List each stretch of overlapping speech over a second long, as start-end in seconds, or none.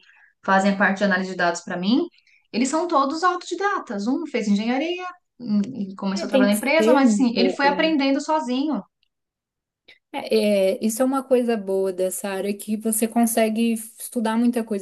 6.1-7.8